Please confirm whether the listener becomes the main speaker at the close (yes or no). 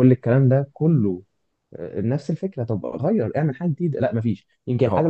no